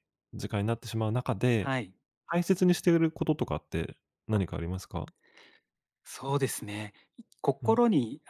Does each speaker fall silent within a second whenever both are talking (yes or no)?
yes